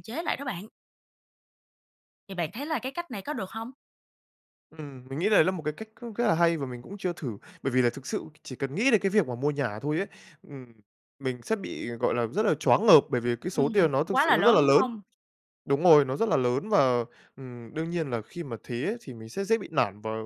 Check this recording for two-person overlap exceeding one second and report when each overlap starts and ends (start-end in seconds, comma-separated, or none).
13.5-14.8